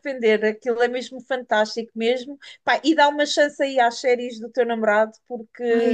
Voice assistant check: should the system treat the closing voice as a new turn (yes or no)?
yes